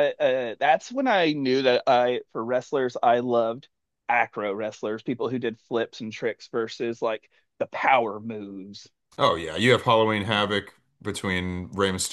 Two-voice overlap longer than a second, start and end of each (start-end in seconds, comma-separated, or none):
none